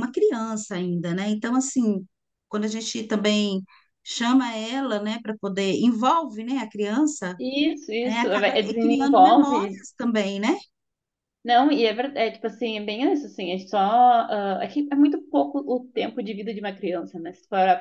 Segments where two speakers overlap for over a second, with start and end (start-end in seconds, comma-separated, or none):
8.0-9.8